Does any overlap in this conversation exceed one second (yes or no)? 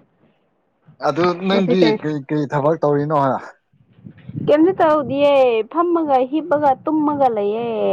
no